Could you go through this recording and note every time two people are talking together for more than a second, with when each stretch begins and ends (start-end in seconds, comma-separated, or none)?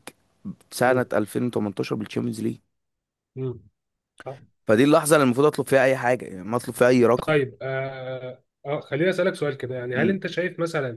none